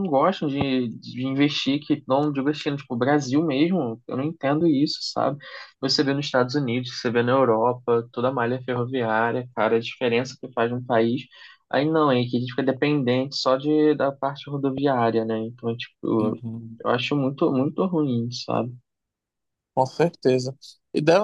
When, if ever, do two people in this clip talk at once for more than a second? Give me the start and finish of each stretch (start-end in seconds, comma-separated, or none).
none